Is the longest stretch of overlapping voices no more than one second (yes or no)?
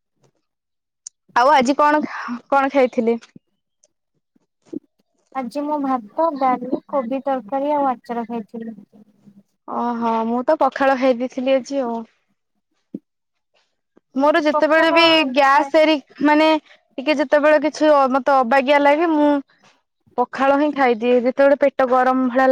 yes